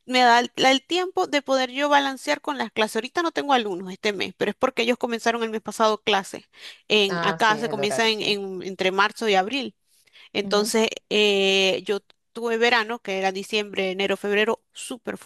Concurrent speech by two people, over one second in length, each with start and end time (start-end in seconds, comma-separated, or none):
7.1-8.4